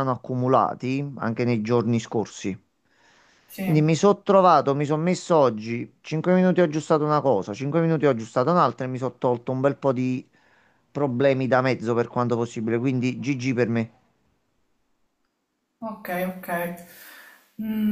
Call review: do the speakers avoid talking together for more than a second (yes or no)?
yes